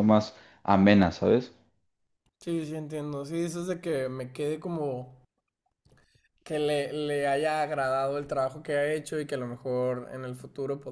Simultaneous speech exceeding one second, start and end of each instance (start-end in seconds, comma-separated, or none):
none